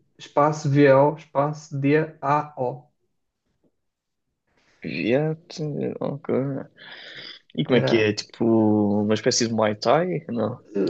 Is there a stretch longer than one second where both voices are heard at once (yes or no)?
no